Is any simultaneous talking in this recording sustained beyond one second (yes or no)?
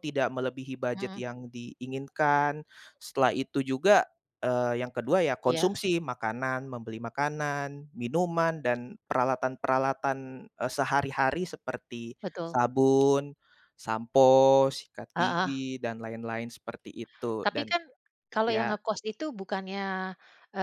no